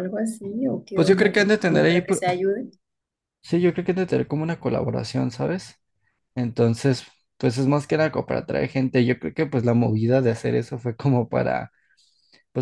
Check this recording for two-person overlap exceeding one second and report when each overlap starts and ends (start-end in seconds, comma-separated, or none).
0.9-2.2